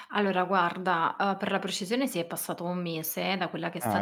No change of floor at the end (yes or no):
yes